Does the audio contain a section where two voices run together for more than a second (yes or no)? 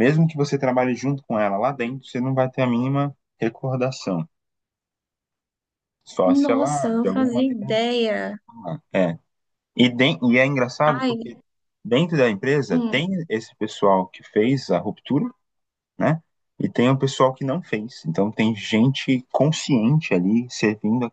yes